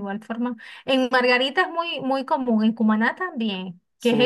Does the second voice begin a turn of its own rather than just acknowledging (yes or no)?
yes